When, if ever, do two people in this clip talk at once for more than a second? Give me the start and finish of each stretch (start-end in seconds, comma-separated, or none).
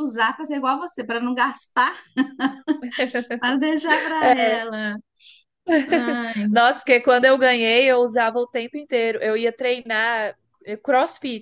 none